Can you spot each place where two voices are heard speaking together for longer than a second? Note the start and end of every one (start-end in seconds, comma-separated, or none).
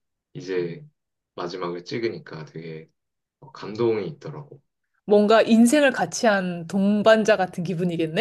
none